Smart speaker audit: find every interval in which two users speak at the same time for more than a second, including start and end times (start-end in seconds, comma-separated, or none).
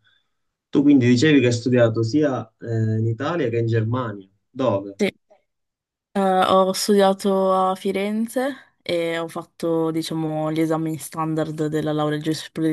none